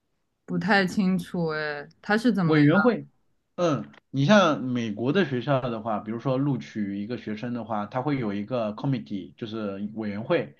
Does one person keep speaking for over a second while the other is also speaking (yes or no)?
no